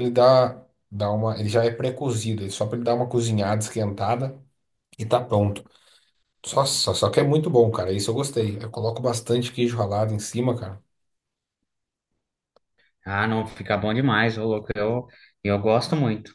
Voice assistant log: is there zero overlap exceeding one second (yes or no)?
yes